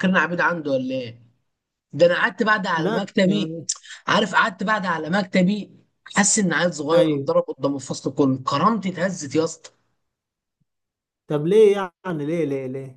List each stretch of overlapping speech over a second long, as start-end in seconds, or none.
none